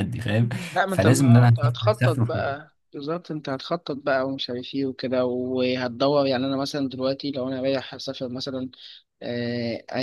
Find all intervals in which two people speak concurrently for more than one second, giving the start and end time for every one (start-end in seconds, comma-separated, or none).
0.8-2.6